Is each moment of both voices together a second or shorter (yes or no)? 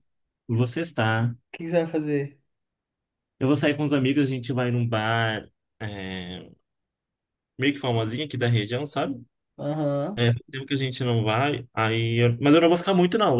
yes